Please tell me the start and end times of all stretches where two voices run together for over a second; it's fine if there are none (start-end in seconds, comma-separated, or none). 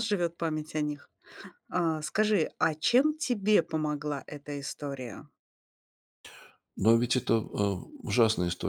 none